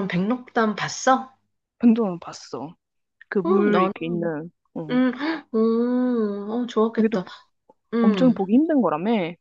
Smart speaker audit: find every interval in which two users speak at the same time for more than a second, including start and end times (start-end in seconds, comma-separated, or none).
none